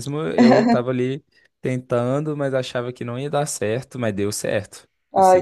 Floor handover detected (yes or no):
yes